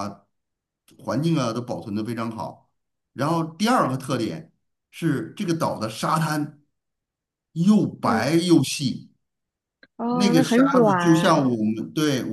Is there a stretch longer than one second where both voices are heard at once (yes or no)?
yes